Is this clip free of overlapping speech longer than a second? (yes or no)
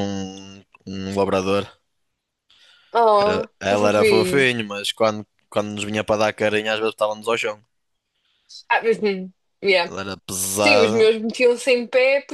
no